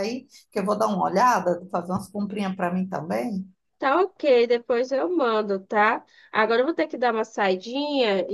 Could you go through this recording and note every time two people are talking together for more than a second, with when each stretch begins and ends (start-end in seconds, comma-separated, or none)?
none